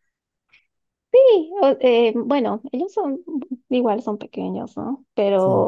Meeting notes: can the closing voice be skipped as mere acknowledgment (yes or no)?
yes